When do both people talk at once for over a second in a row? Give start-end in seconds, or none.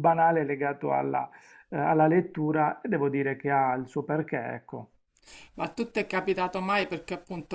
none